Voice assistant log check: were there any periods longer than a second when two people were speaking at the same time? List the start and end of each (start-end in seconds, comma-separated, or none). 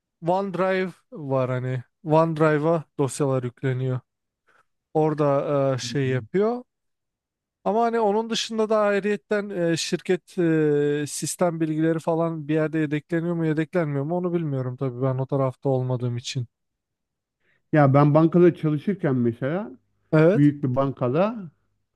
none